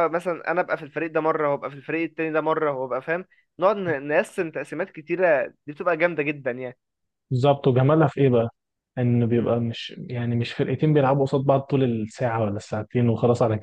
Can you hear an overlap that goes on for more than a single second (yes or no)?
no